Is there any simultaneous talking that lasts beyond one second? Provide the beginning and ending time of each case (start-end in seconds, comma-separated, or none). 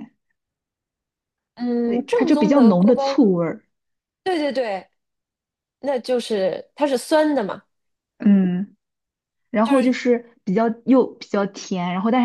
1.8-3.2